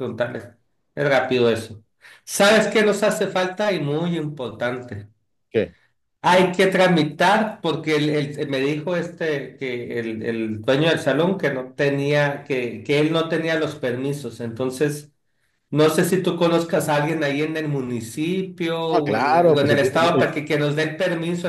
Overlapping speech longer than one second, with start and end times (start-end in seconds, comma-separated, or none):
18.9-20.4